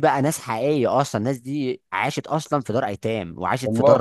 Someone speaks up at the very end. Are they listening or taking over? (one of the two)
listening